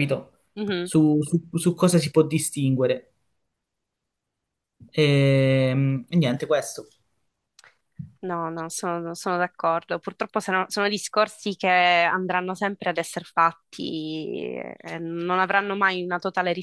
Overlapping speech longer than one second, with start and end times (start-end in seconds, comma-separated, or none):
none